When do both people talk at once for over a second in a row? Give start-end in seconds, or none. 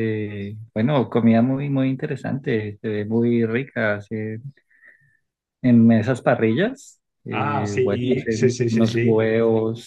7.3-9.3